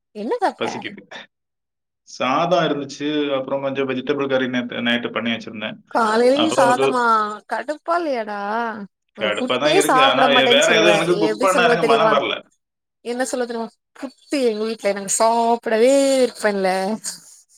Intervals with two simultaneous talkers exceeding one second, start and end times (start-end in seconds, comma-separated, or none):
9.2-12.1